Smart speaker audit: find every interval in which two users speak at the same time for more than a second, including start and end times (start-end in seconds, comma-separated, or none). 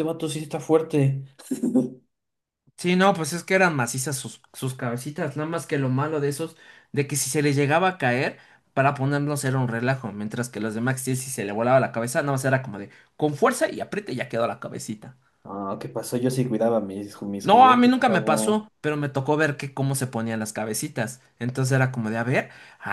17.4-18.7